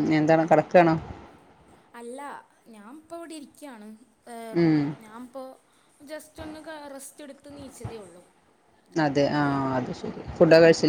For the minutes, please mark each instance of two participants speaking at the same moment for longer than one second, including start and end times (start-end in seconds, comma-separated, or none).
none